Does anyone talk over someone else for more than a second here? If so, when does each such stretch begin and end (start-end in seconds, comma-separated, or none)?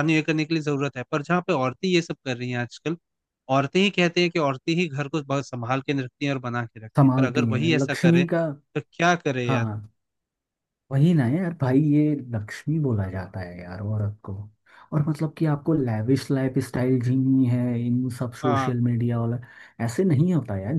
7.0-8.2